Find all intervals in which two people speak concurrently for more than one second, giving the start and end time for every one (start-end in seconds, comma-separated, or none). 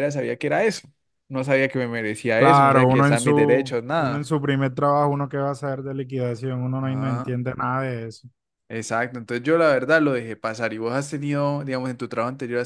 2.3-4.2